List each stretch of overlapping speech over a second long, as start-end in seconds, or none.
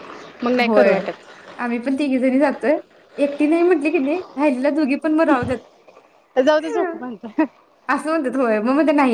none